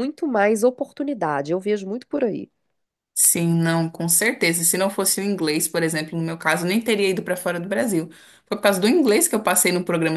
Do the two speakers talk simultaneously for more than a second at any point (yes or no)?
no